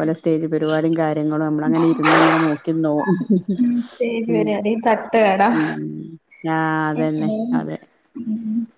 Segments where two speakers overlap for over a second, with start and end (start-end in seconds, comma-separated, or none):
none